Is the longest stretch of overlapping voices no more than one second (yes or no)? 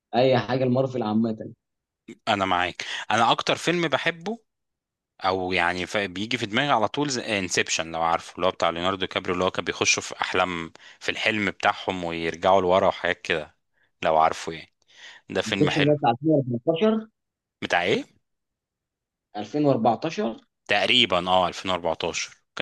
yes